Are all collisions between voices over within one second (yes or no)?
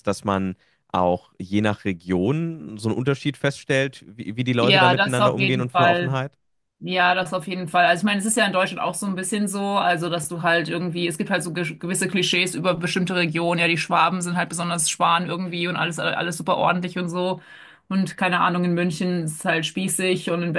no